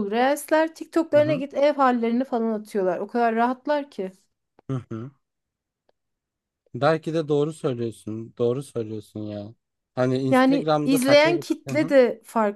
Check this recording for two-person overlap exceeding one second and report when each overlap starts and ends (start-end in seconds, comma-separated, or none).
10.3-11.9